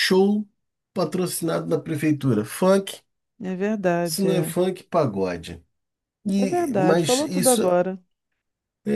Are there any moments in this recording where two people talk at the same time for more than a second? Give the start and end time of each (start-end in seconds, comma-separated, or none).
6.4-7.6